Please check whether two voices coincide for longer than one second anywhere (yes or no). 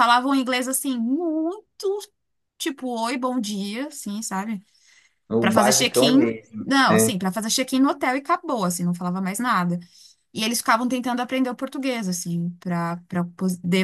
yes